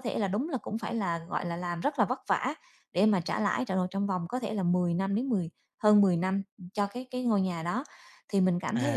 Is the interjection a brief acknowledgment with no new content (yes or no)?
yes